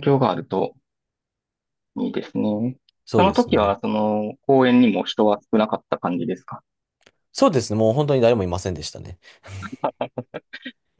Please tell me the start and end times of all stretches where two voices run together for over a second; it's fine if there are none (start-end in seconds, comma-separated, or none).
none